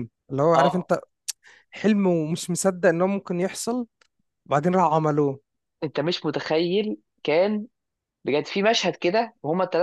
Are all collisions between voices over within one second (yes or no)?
yes